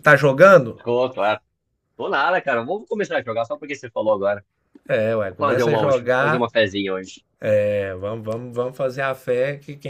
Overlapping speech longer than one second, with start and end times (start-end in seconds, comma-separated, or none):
5.2-6.5